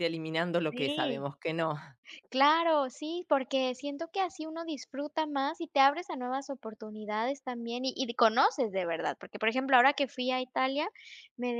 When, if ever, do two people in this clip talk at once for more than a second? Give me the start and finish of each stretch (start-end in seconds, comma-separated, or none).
none